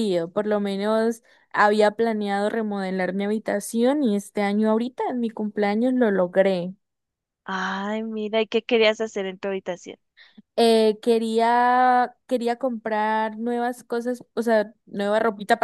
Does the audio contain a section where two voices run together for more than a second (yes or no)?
no